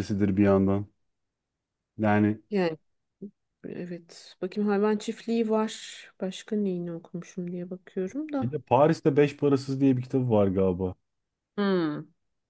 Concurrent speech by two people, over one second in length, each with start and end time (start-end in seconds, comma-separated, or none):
none